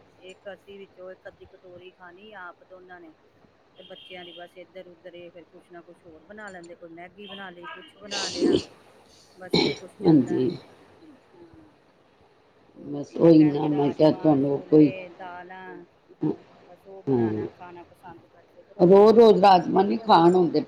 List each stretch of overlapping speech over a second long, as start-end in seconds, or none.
12.8-14.9